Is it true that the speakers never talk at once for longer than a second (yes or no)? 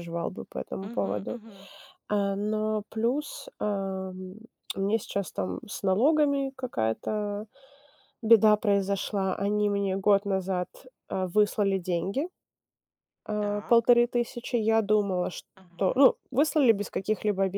yes